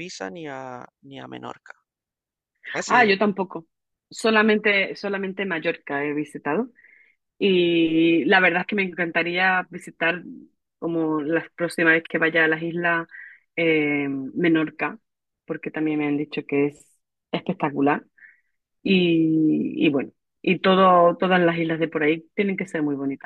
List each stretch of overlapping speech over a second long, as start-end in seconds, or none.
none